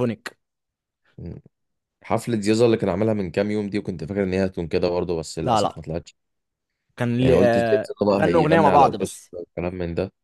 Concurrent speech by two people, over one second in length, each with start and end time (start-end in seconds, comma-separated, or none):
7.2-9.3